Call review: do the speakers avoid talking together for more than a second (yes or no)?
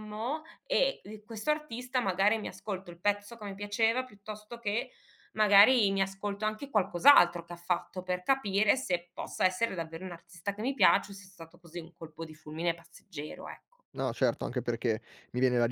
yes